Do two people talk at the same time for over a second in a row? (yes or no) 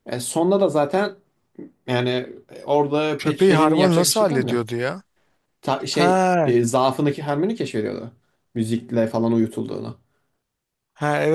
yes